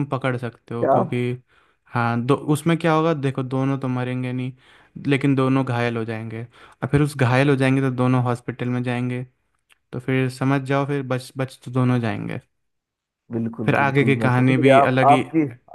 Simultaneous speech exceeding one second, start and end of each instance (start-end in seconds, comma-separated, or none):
13.7-15.2